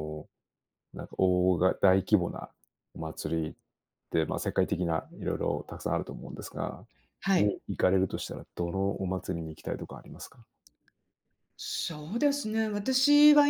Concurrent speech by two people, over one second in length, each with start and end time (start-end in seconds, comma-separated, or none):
none